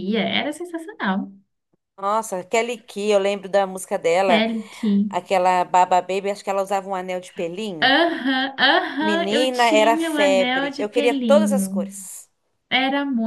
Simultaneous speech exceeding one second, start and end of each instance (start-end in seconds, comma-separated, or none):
9.0-11.9